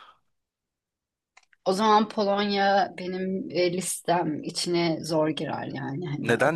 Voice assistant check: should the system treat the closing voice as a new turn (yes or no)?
yes